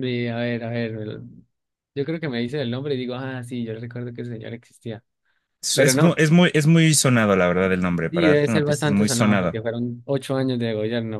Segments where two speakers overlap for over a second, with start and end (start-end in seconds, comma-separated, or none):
8.1-9.6